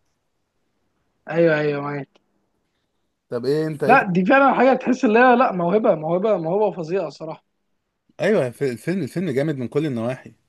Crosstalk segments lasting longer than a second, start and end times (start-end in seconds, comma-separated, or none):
none